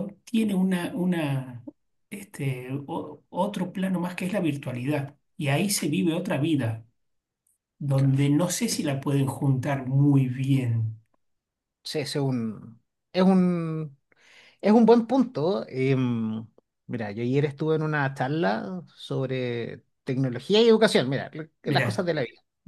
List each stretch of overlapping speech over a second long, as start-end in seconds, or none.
none